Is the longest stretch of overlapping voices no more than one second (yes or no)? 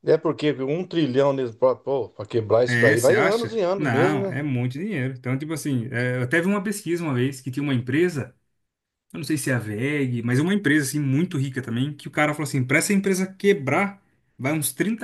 no